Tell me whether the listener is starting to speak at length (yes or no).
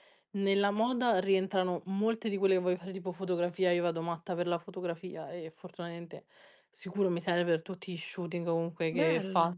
no